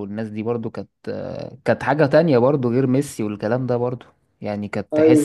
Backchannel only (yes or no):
yes